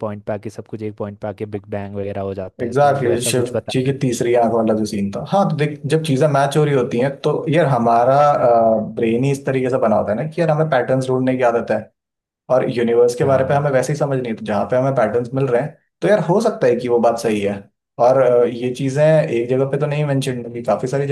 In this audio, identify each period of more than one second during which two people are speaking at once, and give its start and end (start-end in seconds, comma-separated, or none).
2.6-4.2